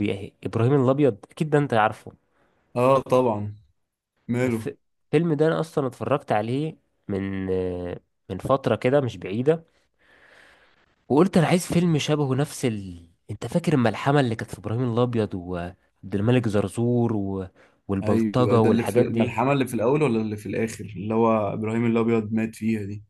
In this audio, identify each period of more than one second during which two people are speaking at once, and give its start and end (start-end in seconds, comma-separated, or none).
18.0-19.4